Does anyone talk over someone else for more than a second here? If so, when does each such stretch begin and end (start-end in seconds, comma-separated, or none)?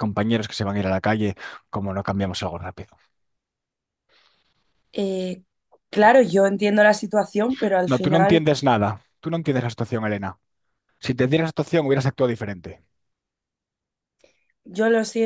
none